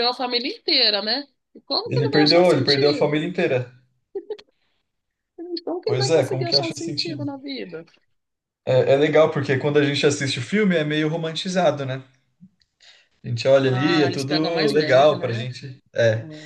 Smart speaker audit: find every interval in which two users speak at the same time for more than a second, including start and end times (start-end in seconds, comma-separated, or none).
1.9-3.3, 5.8-7.3, 13.6-15.5